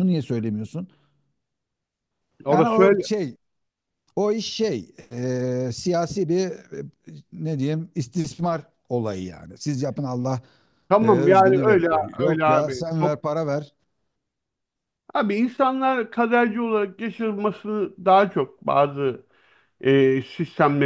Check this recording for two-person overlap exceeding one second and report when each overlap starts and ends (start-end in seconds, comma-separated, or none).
11.0-13.2